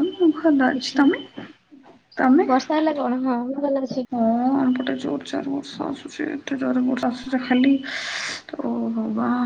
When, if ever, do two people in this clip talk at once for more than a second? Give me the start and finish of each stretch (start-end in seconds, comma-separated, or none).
none